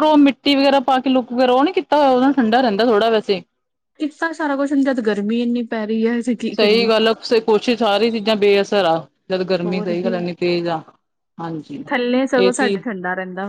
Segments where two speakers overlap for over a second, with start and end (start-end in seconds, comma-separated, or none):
none